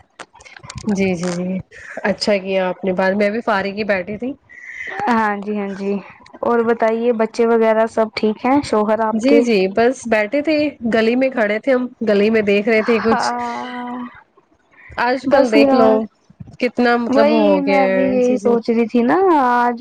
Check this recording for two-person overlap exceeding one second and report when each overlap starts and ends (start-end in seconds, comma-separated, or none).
17.1-18.5